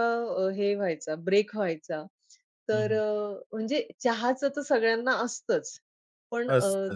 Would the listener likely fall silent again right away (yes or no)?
yes